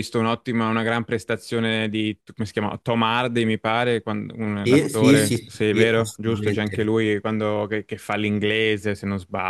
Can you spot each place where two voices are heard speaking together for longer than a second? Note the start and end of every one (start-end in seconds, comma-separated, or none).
4.6-6.9